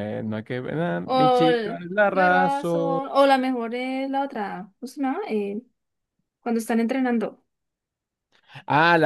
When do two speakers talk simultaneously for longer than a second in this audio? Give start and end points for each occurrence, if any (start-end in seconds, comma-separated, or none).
1.0-3.0